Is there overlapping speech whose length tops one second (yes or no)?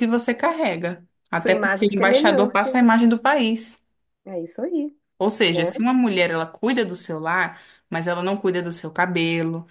yes